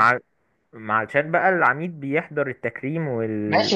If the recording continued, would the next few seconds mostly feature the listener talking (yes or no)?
yes